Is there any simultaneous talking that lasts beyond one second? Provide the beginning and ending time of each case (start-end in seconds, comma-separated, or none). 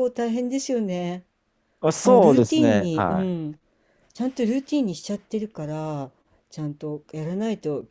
2.0-3.4